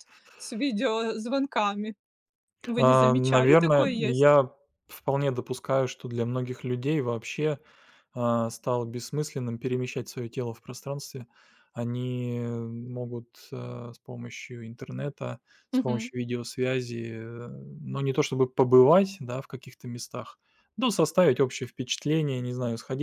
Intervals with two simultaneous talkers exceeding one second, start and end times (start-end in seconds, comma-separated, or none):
2.8-4.4